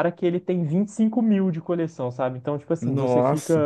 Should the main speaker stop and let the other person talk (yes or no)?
no